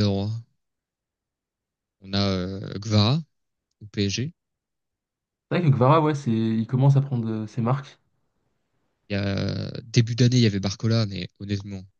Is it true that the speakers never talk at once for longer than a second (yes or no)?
yes